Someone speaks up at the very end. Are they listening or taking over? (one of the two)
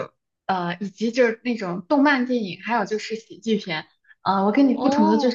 listening